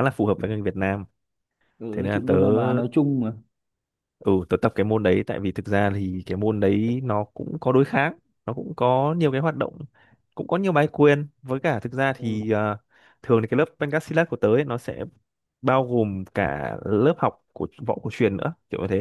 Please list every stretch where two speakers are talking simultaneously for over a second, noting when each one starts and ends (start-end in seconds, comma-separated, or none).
none